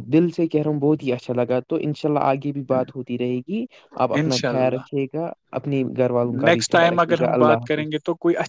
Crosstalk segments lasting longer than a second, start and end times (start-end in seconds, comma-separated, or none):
6.2-7.9